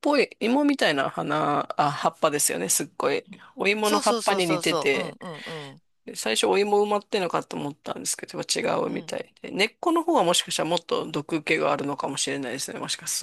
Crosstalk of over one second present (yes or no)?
yes